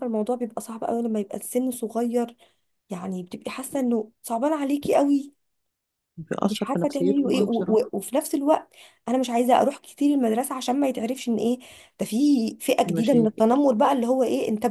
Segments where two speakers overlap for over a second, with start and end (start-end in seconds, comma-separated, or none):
6.5-7.8